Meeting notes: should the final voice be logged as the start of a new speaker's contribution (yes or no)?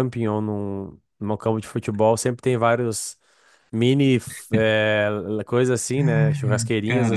no